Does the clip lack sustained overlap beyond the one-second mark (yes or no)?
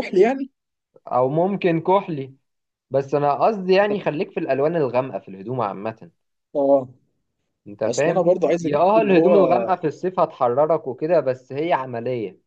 no